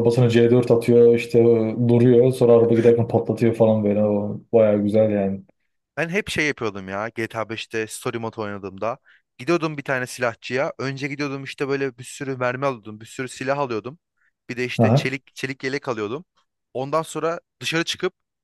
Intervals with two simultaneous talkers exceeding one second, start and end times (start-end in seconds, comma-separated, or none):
none